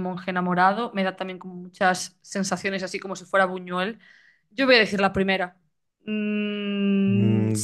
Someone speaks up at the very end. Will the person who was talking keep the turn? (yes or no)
no